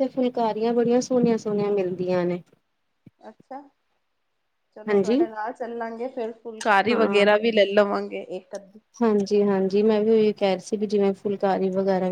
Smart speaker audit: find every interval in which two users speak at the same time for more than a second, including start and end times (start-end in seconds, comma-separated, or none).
none